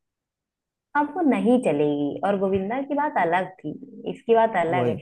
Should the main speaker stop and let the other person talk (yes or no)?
no